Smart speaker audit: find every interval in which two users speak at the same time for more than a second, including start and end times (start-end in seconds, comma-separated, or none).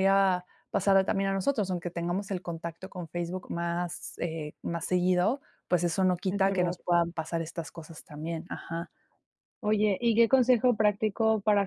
none